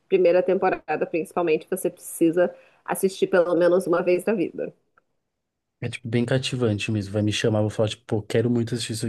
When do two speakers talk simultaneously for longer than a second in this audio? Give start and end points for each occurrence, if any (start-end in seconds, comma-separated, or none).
none